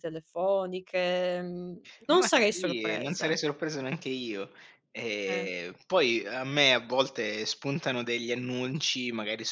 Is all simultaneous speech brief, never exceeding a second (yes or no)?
no